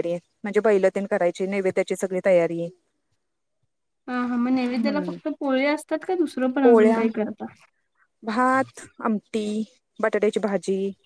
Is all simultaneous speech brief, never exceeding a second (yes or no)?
yes